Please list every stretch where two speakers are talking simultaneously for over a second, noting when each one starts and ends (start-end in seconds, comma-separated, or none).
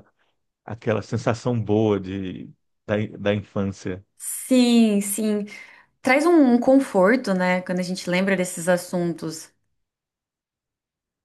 none